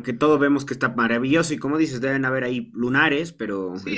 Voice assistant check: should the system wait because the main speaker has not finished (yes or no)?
no